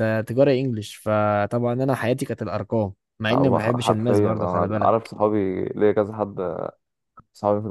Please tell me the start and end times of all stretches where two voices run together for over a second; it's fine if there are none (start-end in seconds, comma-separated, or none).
3.3-5.1